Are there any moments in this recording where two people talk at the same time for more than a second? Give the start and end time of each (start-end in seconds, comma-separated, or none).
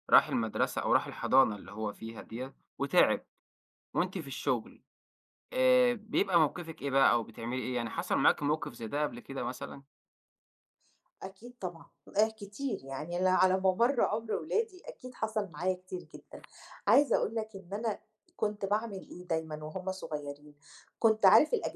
none